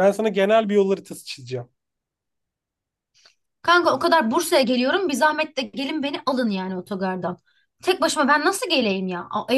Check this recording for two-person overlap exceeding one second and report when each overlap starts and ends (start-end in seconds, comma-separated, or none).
none